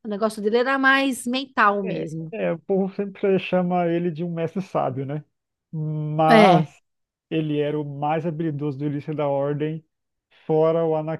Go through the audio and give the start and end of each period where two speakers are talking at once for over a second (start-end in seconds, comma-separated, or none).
none